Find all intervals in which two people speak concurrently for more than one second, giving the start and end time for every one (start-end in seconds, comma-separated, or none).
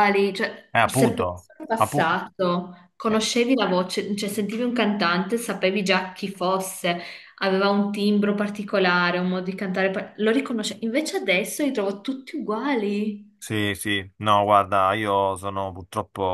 0.7-2.1